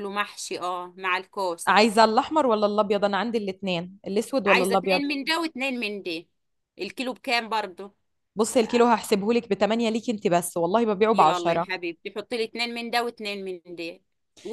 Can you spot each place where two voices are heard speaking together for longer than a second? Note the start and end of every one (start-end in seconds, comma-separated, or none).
none